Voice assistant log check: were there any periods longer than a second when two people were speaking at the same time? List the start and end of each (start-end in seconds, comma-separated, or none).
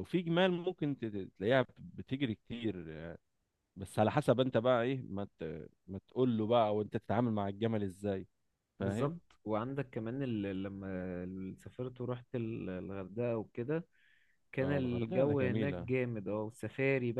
14.6-15.9